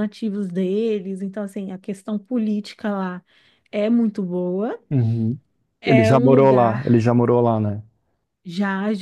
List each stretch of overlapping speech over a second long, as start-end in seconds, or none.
5.9-7.1